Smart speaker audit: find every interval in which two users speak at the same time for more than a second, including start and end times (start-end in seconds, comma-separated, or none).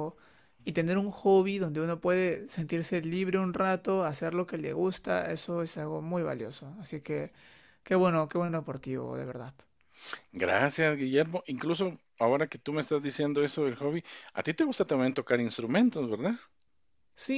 none